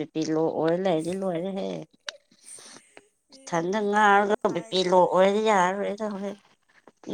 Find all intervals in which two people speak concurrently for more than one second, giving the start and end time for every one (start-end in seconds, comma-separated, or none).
3.3-5.6